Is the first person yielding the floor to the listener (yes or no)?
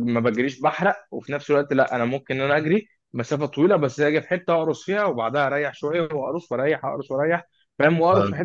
no